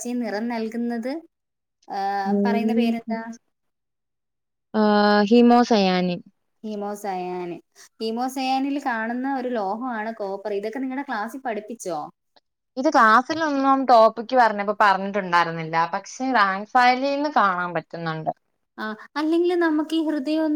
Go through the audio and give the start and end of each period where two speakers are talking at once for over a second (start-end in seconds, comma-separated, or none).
none